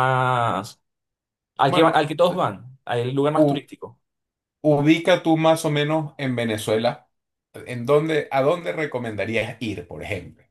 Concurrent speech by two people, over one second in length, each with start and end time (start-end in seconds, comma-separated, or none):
none